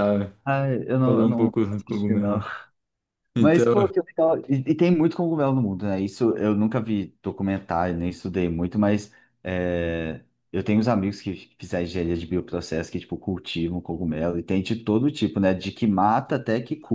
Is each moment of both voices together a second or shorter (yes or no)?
no